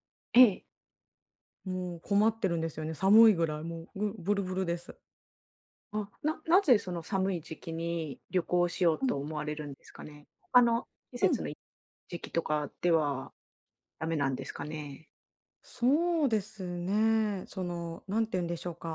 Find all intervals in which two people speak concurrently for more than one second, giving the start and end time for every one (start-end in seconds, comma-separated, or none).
none